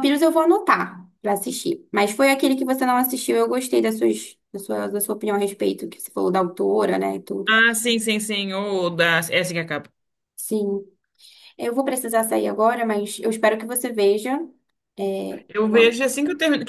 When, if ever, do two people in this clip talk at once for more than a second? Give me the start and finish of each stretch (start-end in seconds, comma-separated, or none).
none